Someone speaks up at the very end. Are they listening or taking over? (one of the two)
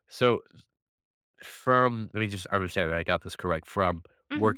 listening